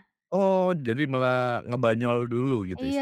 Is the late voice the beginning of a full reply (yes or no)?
yes